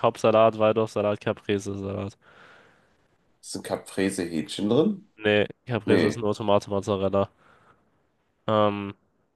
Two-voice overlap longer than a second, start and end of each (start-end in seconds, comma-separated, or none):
none